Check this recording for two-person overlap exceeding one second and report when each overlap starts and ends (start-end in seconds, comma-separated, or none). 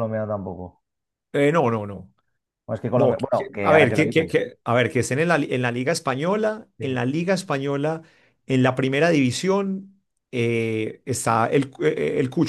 3.0-4.4